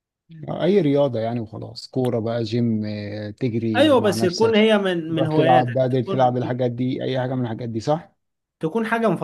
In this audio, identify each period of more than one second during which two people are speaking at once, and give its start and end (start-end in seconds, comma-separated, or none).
3.8-6.4